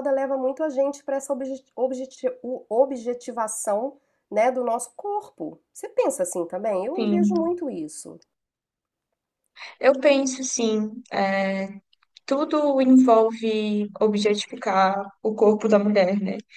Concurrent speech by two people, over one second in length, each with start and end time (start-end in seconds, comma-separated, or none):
none